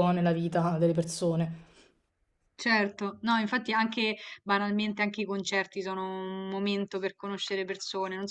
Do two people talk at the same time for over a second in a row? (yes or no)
no